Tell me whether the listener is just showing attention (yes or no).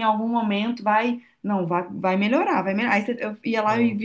yes